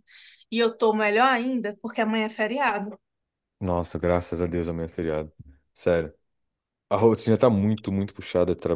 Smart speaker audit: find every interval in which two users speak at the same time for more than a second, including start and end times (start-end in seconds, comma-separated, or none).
none